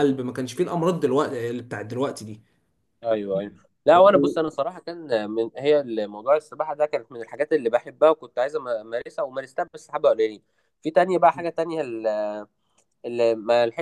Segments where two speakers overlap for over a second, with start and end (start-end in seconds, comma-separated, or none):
none